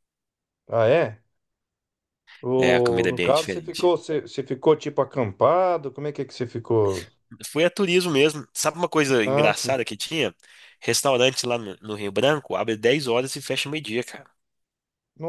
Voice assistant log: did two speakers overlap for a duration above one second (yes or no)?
yes